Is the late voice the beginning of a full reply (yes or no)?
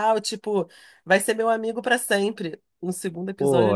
yes